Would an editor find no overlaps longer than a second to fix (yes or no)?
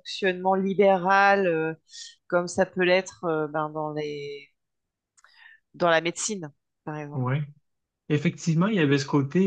yes